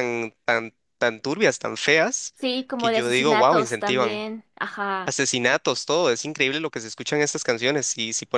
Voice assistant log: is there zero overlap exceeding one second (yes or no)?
no